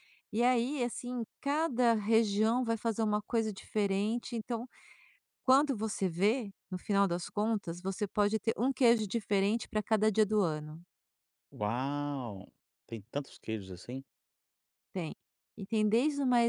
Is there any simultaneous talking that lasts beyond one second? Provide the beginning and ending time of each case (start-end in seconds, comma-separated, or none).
none